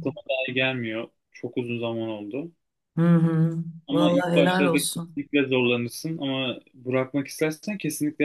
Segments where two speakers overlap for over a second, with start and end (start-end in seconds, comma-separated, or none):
3.9-5.2